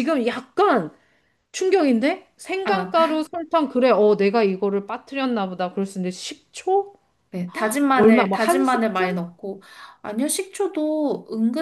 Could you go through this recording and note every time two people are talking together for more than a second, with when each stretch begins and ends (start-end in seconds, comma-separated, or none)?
7.9-9.2